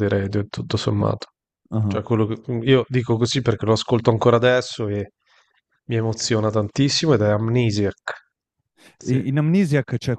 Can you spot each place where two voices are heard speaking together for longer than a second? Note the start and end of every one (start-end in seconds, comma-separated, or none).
none